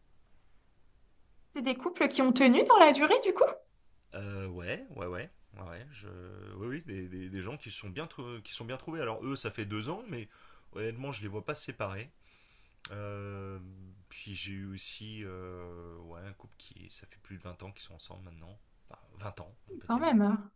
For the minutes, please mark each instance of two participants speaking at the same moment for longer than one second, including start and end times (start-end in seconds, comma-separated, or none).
none